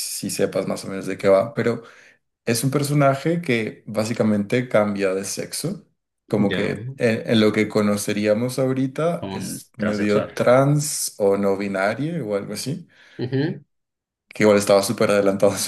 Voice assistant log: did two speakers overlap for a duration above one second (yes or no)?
yes